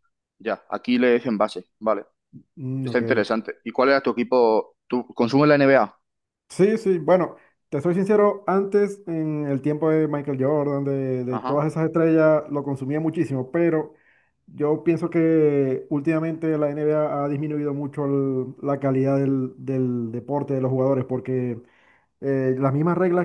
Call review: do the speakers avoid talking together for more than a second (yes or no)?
yes